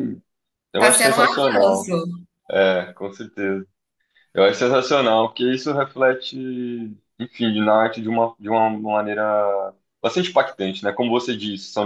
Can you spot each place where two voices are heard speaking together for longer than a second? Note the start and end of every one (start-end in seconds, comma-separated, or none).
0.7-1.9